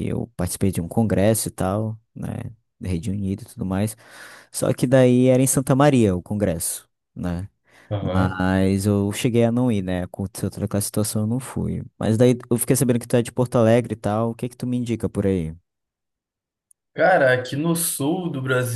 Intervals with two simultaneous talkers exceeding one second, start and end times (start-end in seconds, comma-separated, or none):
none